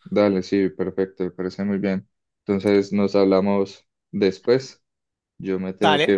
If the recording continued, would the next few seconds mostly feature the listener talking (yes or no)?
no